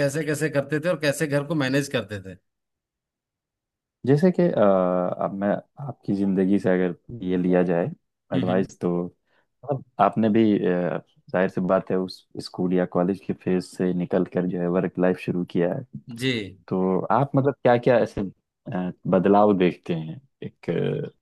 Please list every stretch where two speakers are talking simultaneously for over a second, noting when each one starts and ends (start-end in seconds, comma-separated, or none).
none